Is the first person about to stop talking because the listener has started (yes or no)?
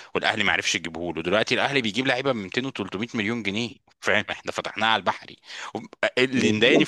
yes